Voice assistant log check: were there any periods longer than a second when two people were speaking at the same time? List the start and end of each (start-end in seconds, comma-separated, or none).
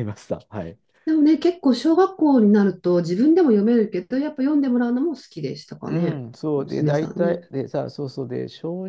5.9-7.4